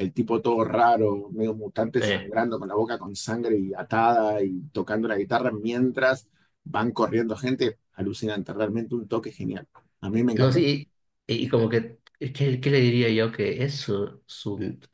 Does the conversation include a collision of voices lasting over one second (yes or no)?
no